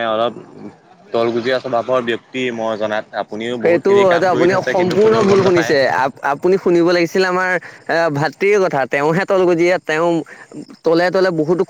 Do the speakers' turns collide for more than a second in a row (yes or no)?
yes